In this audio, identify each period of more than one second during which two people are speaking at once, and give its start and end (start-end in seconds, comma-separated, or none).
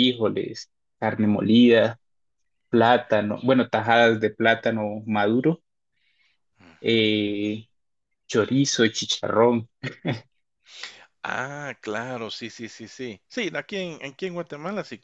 none